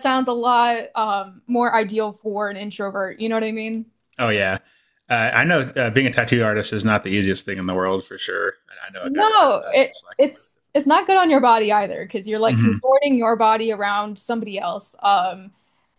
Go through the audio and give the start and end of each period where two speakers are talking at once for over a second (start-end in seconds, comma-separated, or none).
9.0-10.9